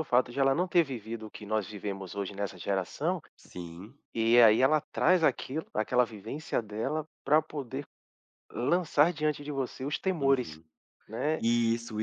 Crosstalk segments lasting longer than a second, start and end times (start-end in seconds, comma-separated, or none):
none